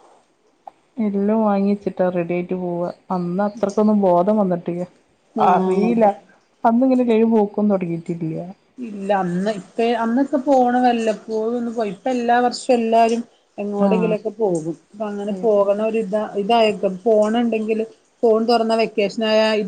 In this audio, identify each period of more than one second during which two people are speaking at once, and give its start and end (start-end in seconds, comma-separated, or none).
none